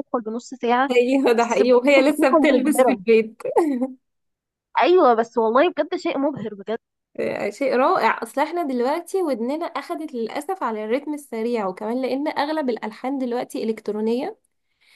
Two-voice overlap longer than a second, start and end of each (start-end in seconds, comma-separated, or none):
1.4-3.0